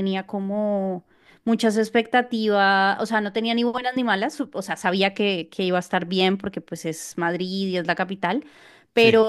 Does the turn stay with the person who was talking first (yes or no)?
yes